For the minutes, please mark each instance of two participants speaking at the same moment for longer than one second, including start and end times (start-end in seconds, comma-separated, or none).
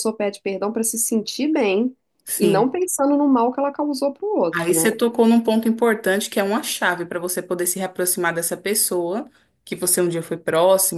none